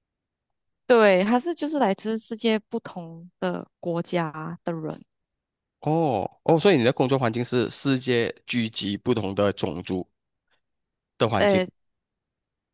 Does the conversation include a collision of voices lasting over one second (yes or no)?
no